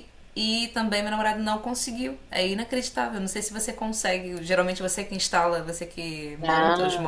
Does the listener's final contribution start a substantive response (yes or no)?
yes